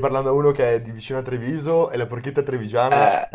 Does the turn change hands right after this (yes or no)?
yes